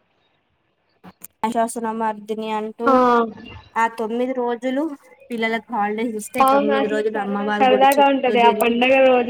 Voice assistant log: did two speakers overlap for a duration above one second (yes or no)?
yes